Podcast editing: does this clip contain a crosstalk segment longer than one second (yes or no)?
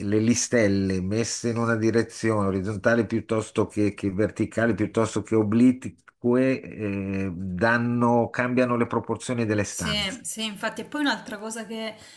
no